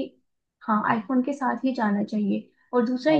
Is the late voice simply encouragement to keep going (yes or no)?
yes